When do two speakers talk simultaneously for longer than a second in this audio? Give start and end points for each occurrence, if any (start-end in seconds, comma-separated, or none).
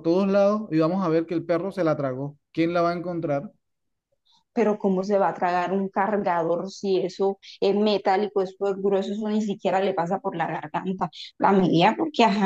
none